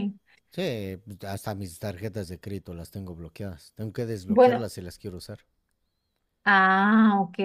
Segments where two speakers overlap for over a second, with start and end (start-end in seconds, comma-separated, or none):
none